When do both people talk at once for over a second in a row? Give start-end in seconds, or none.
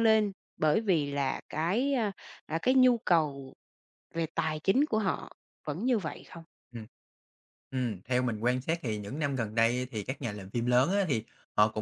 none